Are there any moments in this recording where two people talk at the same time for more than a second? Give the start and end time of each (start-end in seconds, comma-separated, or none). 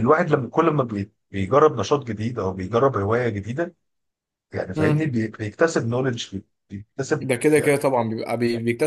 none